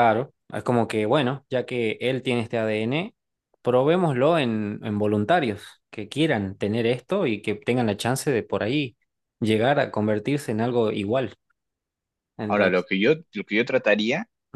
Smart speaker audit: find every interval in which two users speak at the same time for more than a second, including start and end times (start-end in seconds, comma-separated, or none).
none